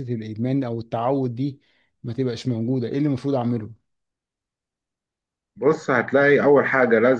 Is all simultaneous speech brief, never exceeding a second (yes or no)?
yes